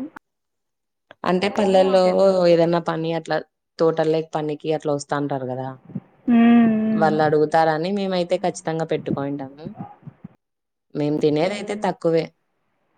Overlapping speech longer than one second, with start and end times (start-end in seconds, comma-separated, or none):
none